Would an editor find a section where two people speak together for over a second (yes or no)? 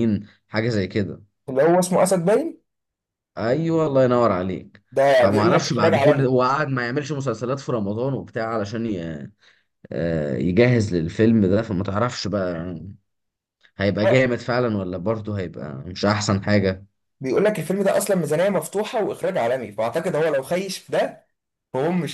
yes